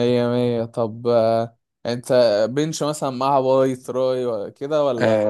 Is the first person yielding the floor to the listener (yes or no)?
yes